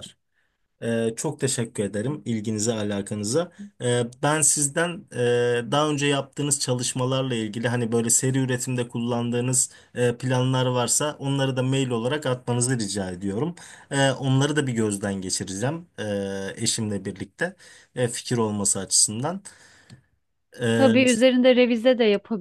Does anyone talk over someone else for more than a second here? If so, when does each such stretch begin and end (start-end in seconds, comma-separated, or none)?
none